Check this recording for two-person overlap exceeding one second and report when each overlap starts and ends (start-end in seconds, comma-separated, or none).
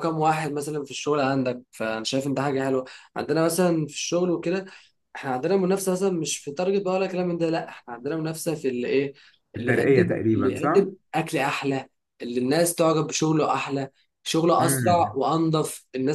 9.6-10.9